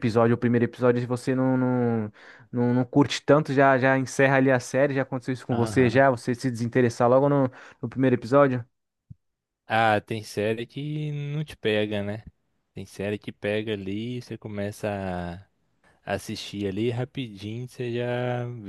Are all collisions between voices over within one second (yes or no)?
yes